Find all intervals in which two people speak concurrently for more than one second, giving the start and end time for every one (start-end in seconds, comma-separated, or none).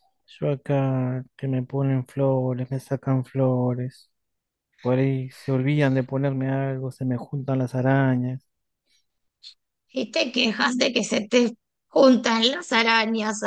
none